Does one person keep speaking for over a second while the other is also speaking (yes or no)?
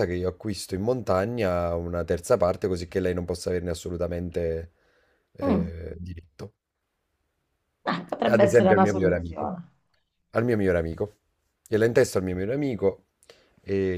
yes